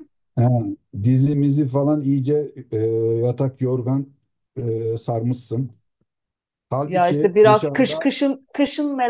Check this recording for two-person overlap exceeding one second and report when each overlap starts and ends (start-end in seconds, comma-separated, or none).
6.8-8.1